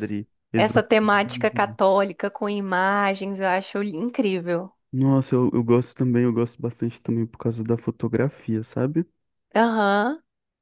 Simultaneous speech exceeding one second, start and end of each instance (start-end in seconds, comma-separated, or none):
0.5-1.8